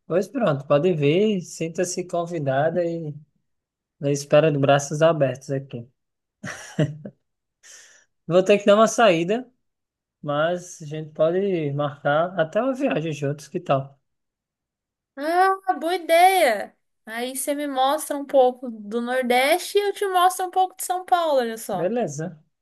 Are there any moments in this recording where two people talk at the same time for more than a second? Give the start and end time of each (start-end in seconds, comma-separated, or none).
none